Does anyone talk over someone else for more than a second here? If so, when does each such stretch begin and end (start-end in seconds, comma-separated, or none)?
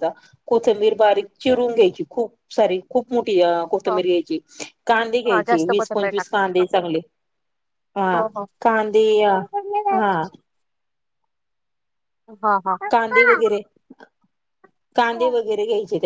5.3-6.6